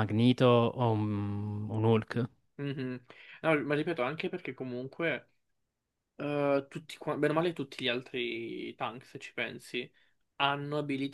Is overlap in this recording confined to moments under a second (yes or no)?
yes